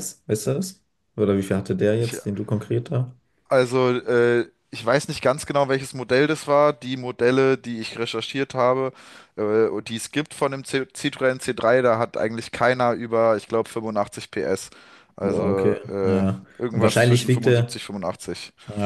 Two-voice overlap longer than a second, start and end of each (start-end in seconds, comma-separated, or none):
15.2-17.8